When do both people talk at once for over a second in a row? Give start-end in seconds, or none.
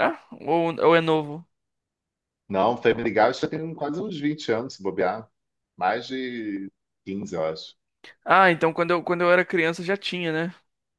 none